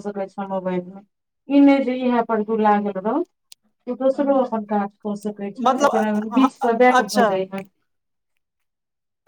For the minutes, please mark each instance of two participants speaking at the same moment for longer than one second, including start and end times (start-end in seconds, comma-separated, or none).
5.7-7.3